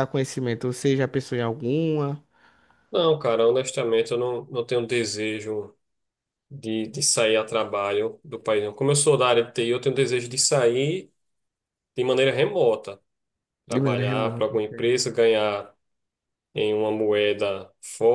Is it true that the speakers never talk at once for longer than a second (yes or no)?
no